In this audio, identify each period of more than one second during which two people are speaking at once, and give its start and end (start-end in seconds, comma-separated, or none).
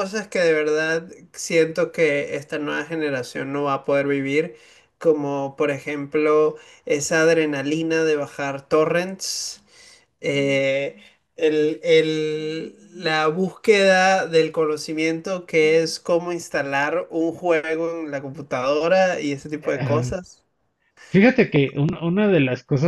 none